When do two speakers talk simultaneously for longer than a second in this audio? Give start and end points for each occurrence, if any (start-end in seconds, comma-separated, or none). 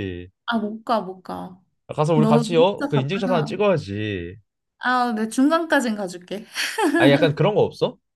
2.1-3.6